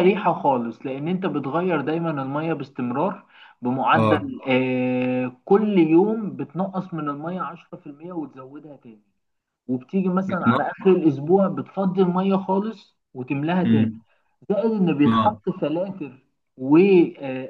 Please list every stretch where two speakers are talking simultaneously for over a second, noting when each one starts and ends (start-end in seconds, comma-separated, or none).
none